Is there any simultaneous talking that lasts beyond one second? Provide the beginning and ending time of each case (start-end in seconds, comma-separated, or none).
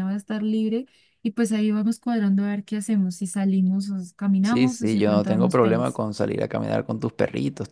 4.4-6.0